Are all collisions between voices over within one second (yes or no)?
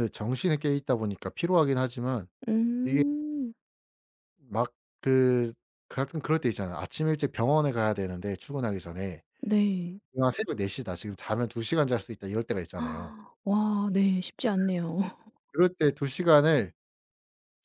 yes